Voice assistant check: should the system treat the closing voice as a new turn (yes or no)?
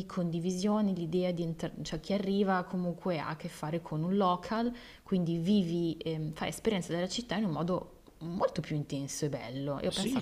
yes